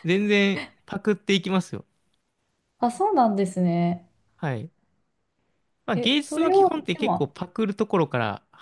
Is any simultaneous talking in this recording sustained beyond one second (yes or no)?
yes